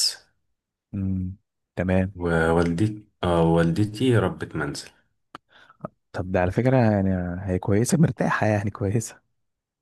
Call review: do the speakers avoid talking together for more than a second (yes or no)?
yes